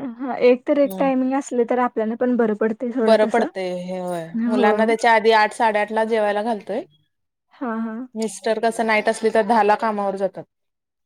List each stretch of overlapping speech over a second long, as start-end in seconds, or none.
none